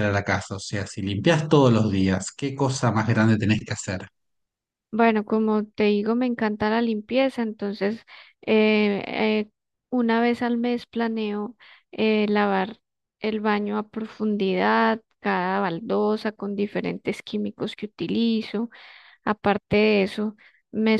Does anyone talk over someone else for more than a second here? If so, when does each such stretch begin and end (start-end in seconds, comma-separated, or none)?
none